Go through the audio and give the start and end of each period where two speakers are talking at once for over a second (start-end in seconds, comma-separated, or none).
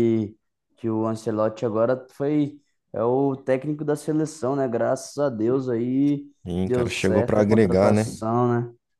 6.7-8.1